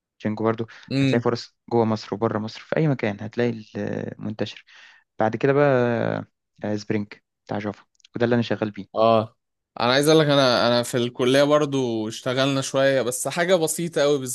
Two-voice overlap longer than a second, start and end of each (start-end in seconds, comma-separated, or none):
none